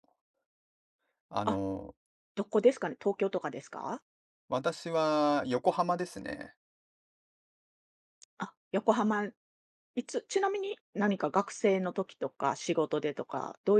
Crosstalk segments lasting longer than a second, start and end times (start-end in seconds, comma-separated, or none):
none